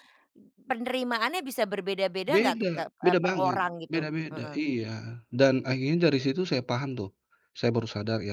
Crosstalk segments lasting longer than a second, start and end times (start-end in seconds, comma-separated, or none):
2.2-4.6